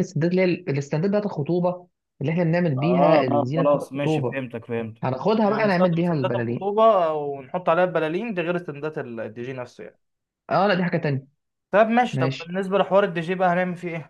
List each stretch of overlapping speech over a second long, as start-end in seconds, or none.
2.8-4.4, 5.0-6.7